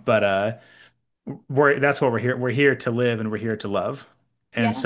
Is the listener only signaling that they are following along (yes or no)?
yes